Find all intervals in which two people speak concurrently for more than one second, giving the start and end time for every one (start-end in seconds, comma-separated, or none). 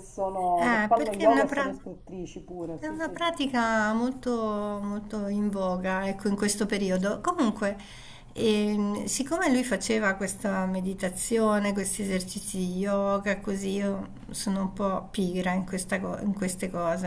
0.6-1.8